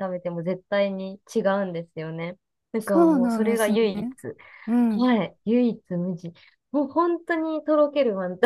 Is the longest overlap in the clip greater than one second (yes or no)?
yes